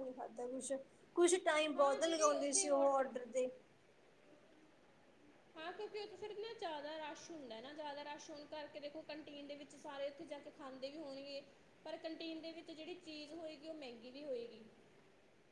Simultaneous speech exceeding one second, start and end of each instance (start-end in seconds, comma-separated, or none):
1.8-3.0